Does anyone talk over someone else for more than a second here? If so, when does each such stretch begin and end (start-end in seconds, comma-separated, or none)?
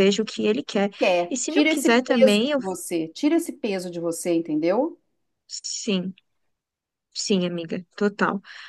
1.3-2.6